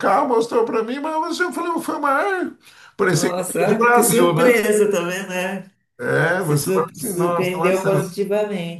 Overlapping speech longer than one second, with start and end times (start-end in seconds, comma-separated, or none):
3.1-4.6, 6.4-8.1